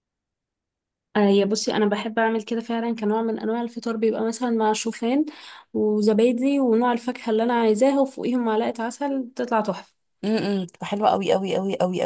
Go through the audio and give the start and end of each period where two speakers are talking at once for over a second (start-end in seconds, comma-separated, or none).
none